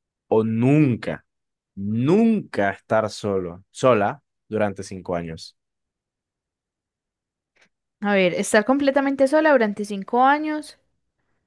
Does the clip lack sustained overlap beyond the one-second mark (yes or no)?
yes